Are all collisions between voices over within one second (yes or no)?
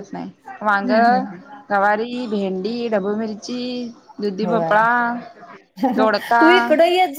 yes